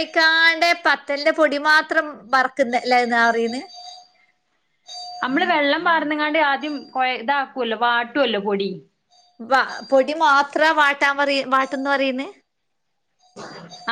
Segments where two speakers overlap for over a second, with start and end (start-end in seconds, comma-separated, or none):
none